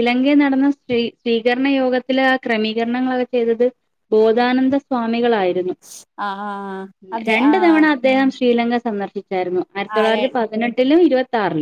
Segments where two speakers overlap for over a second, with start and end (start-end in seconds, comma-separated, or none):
none